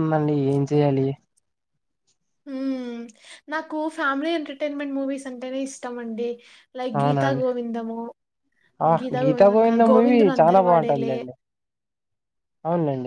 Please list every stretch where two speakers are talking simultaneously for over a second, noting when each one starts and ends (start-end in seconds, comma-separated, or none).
9.3-11.2